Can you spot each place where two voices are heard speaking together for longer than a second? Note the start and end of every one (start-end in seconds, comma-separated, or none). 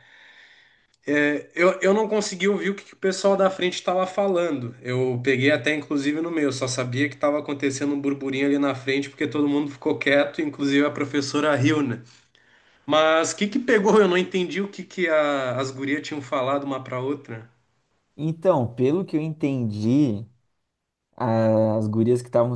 none